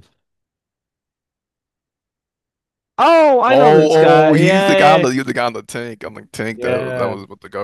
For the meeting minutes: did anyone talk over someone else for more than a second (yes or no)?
yes